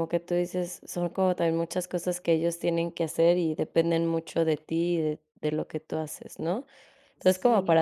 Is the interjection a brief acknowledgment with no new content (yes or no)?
yes